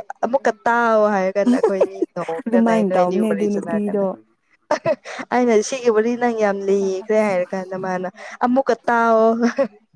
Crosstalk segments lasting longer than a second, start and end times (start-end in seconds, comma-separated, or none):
2.4-4.0